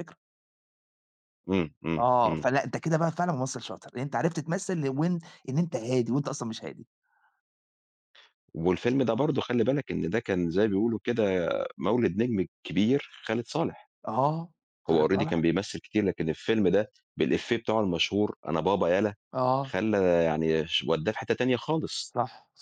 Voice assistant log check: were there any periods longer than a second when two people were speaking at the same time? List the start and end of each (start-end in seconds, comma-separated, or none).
none